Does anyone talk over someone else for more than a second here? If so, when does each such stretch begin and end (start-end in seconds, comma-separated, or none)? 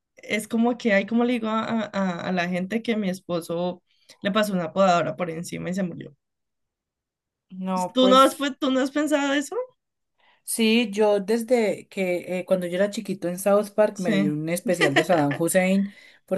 none